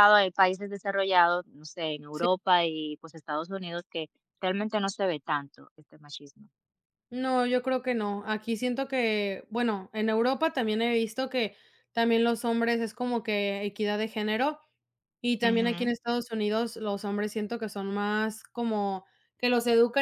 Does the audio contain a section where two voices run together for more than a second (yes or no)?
no